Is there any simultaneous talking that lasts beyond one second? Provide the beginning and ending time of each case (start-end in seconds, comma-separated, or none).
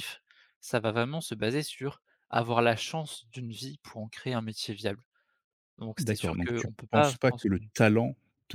6.0-7.7